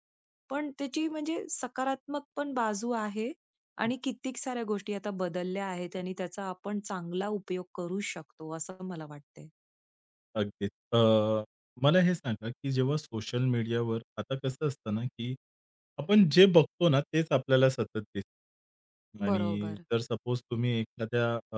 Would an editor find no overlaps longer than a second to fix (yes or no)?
yes